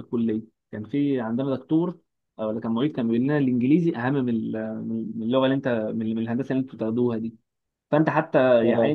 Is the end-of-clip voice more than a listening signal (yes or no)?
no